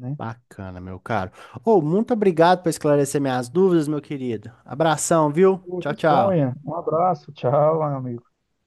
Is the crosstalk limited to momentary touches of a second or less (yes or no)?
yes